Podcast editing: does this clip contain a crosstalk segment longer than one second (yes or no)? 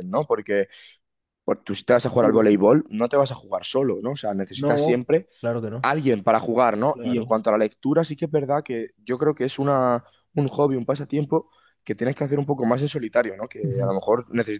no